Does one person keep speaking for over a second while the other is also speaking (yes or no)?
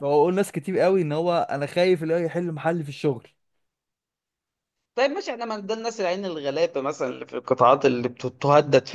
no